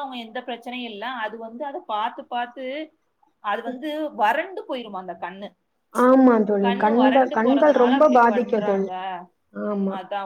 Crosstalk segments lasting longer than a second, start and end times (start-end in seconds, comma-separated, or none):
6.6-8.9